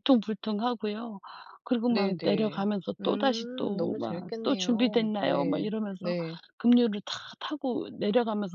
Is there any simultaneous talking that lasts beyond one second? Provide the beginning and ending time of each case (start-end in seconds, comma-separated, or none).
1.9-6.1